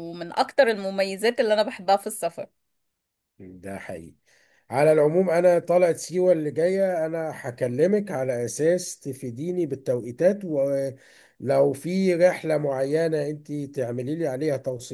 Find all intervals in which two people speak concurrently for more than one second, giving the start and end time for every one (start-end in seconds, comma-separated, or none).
none